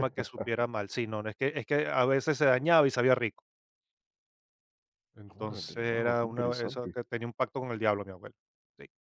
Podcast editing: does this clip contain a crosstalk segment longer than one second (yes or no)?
yes